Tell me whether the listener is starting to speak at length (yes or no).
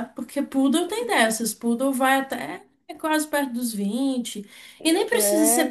no